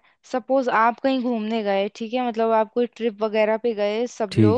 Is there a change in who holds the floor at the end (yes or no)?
no